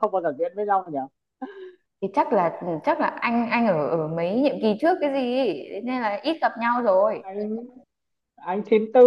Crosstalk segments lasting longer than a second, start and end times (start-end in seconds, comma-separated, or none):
none